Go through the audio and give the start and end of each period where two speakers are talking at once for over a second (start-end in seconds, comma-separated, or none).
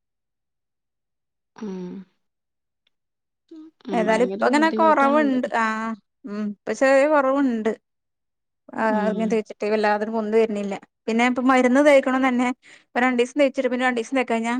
4.0-5.4